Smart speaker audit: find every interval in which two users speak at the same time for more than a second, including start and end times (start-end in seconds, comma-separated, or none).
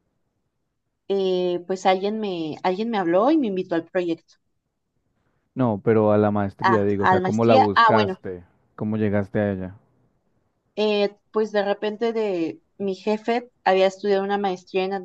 6.6-8.2